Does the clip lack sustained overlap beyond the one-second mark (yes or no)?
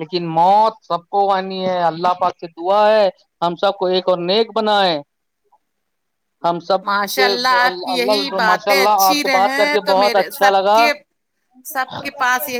no